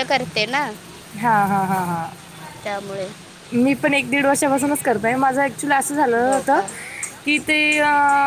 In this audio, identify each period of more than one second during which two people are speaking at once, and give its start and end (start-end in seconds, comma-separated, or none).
none